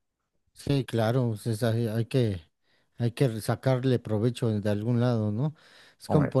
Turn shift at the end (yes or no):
no